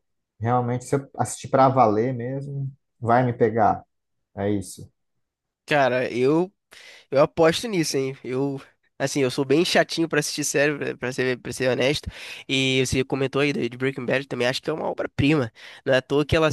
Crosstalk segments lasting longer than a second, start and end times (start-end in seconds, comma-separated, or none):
none